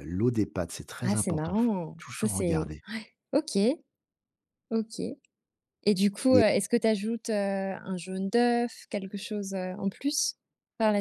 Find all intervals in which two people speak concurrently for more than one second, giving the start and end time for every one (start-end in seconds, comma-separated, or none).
1.0-2.8